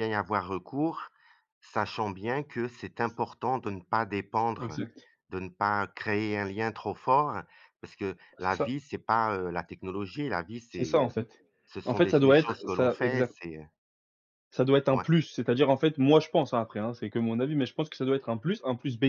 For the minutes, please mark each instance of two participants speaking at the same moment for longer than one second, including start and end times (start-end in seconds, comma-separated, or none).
11.8-13.3